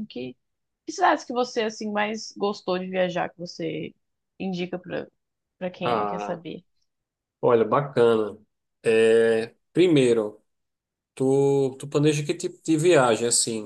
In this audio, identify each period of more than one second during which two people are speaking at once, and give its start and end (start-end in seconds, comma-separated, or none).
none